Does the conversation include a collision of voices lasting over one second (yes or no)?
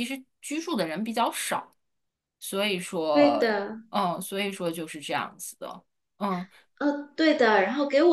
no